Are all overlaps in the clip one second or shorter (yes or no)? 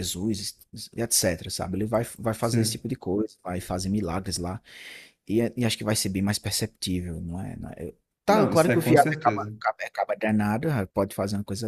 no